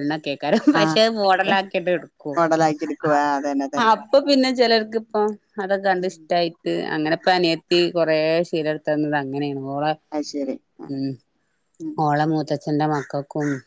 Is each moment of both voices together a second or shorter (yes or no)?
yes